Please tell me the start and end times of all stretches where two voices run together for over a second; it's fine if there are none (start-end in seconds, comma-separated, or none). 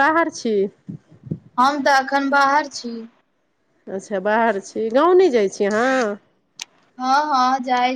none